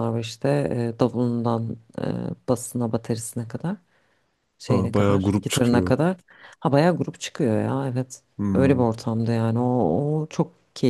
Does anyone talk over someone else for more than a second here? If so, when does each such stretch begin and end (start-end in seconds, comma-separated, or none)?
4.6-5.9